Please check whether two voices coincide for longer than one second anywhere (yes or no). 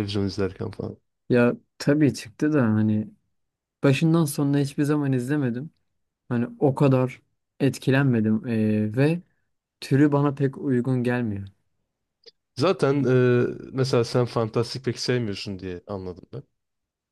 no